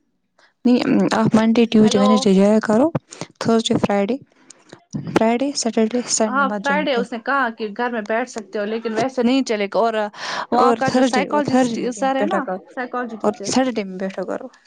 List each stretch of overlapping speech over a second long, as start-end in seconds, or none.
10.6-12.6